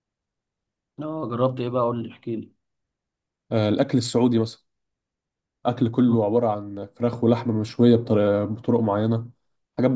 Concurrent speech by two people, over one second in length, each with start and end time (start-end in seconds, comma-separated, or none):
none